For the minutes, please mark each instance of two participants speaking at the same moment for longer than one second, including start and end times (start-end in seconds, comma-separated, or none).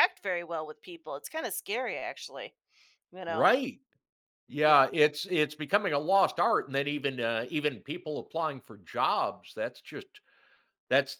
none